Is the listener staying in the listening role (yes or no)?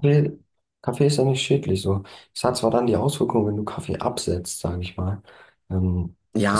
no